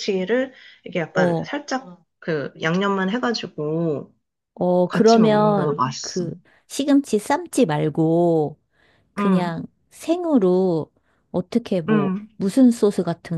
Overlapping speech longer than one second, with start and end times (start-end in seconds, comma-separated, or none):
4.9-6.2